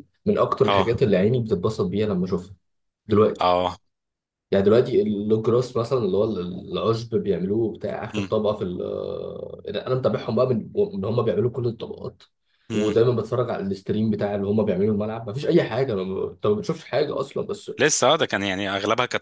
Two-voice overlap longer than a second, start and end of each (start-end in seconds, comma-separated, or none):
none